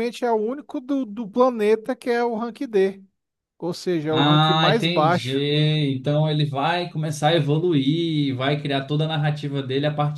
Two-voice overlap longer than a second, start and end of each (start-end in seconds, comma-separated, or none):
4.1-5.3